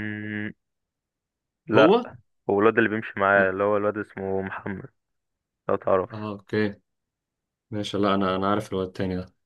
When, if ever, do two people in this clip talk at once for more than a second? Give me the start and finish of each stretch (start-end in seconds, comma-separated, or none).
none